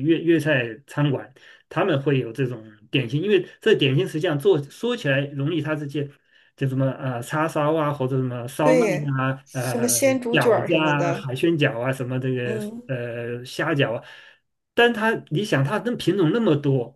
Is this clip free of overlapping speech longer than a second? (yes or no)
no